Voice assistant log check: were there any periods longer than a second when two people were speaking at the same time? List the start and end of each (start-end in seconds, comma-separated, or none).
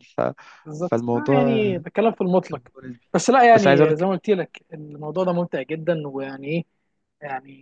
0.8-2.1